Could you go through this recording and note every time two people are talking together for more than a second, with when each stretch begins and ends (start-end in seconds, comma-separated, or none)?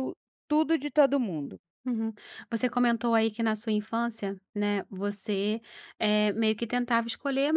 none